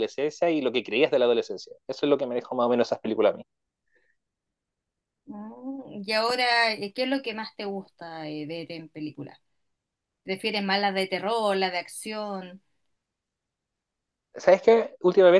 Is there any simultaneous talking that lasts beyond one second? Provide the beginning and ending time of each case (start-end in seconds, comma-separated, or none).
none